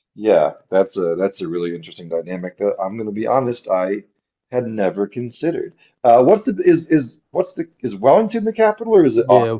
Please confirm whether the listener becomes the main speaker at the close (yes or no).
yes